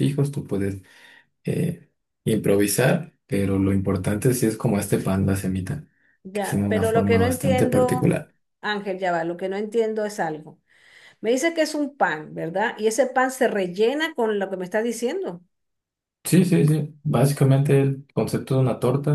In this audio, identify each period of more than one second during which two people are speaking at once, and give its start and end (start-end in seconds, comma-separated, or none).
6.3-8.2